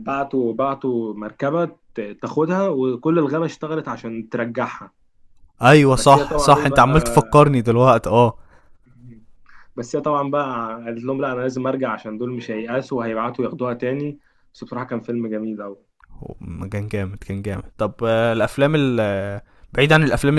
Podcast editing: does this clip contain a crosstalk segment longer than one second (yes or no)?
yes